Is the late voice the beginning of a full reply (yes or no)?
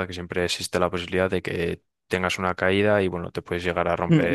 yes